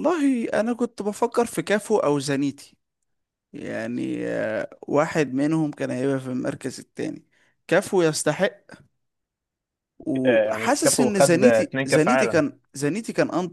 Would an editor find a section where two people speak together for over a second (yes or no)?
yes